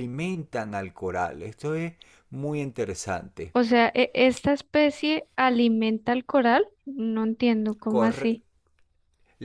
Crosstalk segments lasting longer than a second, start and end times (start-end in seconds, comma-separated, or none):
none